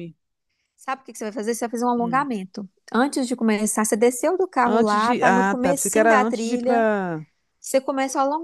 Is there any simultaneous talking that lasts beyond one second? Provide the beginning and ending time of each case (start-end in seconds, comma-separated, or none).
4.6-6.9